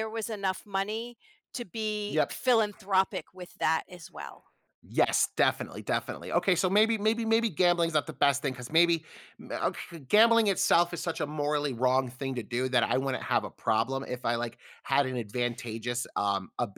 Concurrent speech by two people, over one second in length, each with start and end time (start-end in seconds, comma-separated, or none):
none